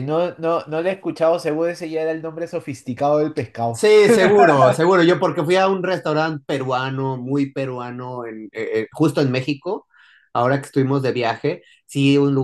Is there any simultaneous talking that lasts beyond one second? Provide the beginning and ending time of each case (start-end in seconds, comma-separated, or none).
none